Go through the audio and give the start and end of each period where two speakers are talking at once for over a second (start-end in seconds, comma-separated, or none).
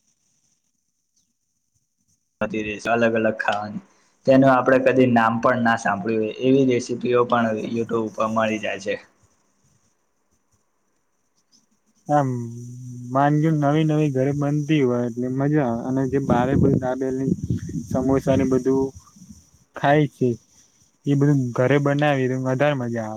none